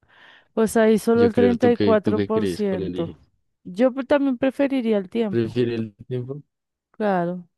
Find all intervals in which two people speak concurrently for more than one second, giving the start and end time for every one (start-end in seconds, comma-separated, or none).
1.1-3.2